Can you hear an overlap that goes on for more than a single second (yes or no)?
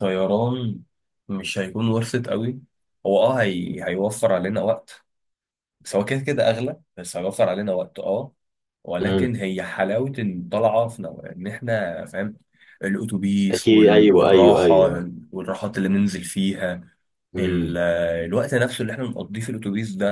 yes